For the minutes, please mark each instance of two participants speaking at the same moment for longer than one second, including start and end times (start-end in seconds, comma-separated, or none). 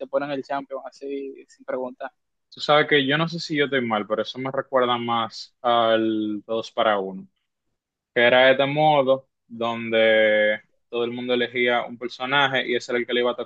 none